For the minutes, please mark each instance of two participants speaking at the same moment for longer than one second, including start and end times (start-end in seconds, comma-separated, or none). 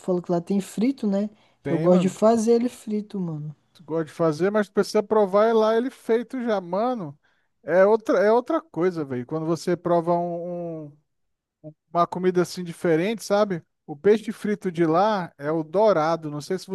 none